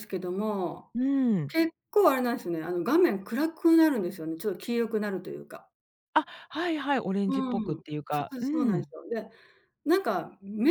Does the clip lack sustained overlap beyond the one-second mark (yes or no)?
no